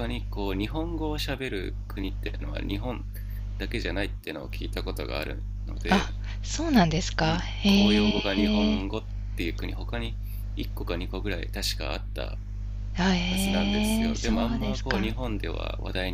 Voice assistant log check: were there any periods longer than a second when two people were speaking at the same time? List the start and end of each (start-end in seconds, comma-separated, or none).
7.2-8.9, 13.3-15.1